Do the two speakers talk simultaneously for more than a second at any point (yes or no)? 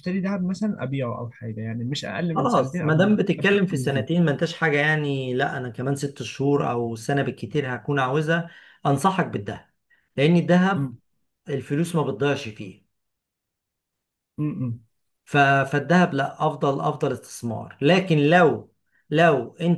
yes